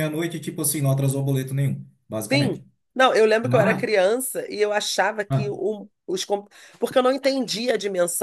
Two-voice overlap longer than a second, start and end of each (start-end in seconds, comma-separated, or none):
none